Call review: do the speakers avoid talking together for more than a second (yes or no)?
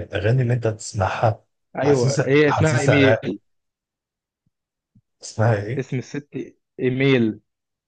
no